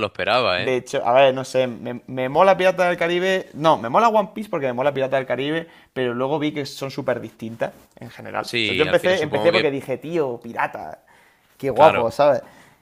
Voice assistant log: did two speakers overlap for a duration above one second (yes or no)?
yes